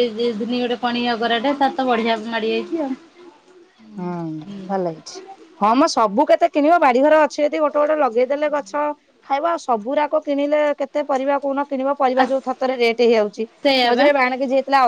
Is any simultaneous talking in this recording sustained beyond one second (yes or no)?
no